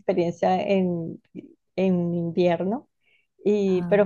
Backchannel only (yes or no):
yes